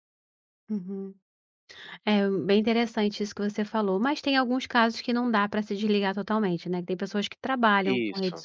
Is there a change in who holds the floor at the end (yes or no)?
no